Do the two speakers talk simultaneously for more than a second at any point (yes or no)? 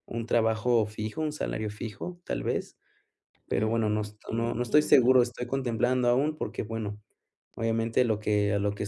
yes